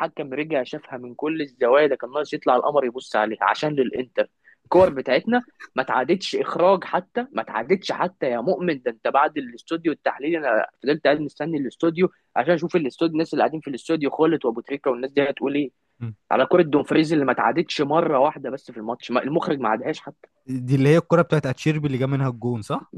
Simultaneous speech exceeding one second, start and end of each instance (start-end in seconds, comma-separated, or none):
none